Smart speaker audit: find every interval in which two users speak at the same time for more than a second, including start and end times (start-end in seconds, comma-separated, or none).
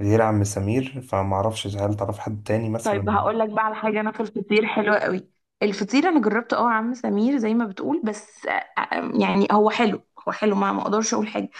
none